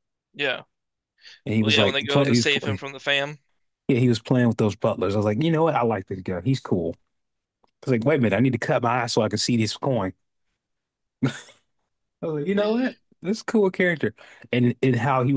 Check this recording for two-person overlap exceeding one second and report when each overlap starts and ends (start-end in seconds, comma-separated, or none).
1.6-2.8